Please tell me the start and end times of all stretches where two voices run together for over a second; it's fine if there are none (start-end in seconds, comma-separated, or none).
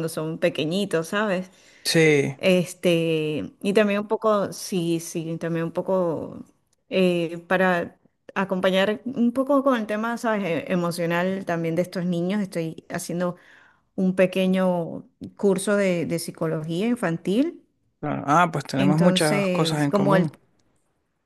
18.8-20.3